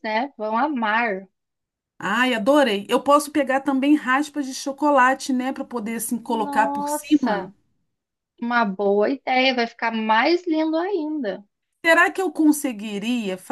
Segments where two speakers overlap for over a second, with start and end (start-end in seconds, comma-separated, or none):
6.3-7.5